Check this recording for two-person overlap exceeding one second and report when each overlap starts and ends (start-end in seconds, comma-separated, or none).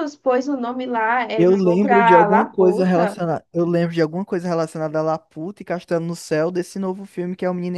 1.4-3.2